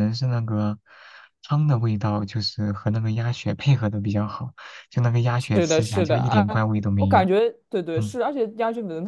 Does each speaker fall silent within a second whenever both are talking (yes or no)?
no